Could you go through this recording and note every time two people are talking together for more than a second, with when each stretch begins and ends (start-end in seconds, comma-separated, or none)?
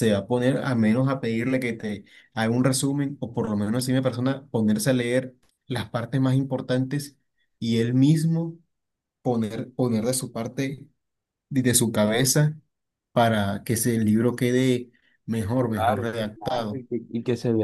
15.4-16.8